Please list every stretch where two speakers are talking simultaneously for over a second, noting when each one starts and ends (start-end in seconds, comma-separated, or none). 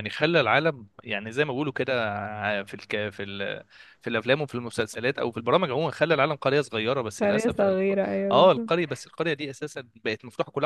7.2-8.9